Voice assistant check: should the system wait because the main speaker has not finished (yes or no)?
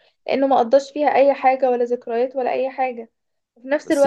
yes